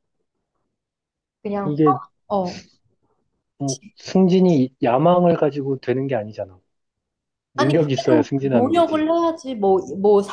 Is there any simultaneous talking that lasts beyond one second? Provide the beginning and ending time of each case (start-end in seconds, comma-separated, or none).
7.5-9.1